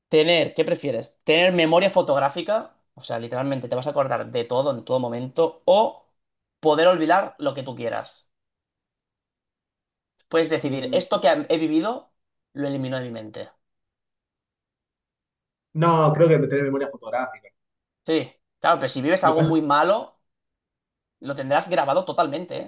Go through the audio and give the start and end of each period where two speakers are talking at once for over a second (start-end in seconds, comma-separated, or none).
none